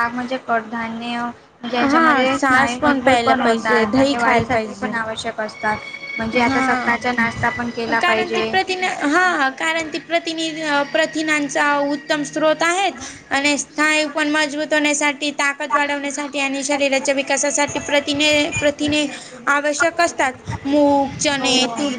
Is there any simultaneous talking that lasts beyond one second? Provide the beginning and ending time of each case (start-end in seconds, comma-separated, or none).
1.8-4.9